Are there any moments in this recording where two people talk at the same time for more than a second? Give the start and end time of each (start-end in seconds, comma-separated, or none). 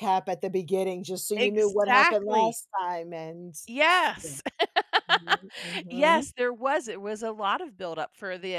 1.4-2.6